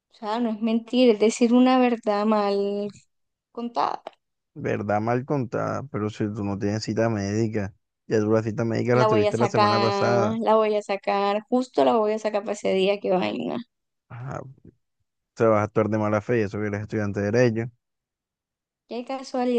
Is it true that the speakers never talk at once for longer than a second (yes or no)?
no